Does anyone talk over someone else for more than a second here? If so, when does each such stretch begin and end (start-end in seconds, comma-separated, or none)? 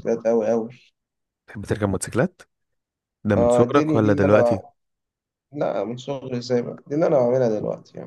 3.4-4.6